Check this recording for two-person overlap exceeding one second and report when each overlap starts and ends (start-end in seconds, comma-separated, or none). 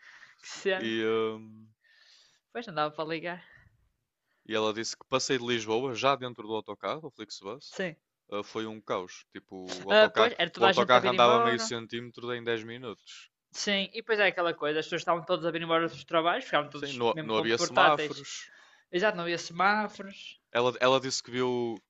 9.9-11.7, 16.7-18.3